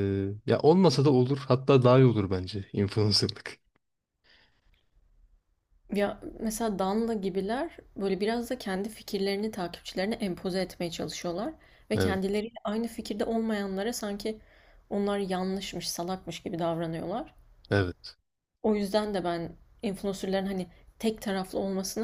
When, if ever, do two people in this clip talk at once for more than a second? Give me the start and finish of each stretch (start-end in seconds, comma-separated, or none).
none